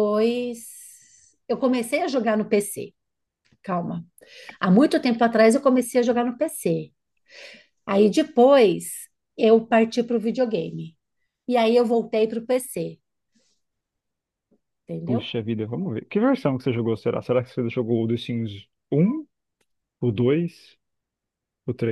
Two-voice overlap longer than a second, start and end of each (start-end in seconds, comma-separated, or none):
none